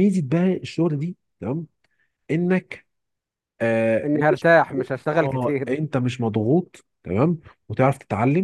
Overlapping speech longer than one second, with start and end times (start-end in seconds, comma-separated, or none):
none